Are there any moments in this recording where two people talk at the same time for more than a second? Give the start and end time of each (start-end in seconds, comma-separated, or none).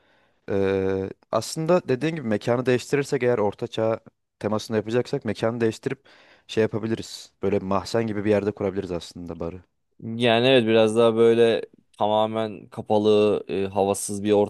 none